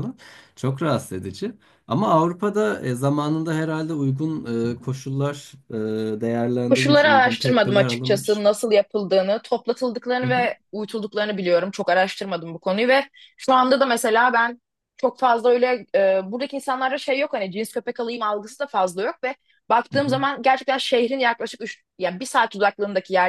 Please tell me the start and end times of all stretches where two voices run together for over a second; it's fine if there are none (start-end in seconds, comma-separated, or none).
6.7-8.5